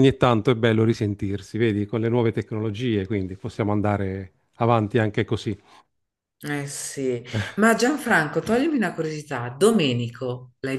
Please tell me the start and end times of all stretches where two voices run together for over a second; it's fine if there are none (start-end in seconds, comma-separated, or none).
none